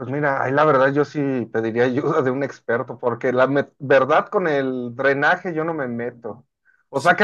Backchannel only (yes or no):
yes